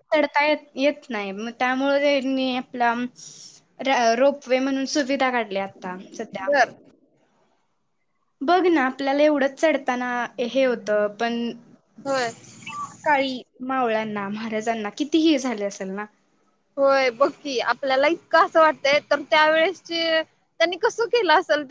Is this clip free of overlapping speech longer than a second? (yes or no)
yes